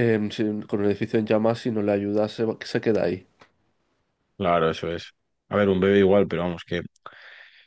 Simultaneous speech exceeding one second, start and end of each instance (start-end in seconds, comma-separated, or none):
none